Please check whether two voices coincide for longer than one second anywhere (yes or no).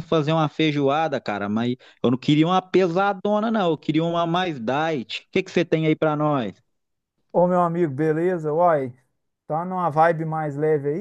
no